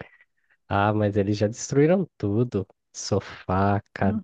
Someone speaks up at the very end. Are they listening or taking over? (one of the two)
listening